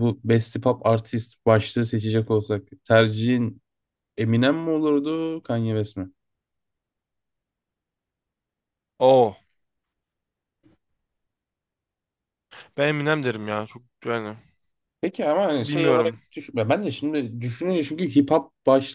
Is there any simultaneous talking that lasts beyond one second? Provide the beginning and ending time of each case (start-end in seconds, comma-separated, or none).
none